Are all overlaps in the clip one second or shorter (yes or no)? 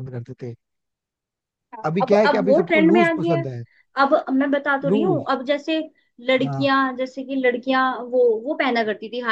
no